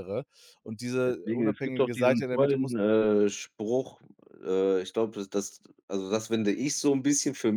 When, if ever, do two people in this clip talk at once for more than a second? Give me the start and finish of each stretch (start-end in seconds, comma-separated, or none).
1.0-2.8